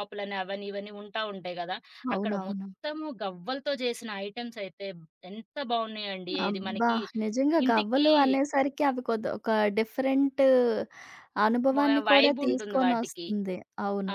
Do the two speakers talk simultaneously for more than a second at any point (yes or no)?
yes